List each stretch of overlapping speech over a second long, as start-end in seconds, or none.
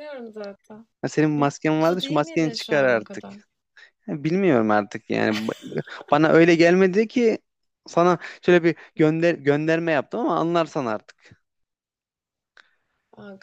1.4-3.2